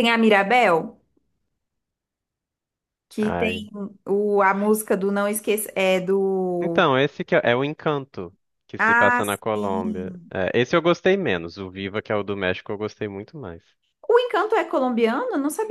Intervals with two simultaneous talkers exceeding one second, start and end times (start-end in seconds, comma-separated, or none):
8.8-10.3